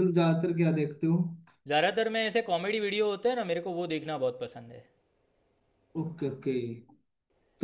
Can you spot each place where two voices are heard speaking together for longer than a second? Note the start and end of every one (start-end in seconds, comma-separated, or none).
none